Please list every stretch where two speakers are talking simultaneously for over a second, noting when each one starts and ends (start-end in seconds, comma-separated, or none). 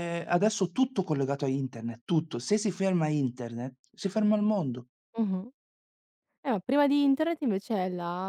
none